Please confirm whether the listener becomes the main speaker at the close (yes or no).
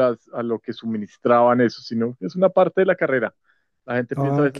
no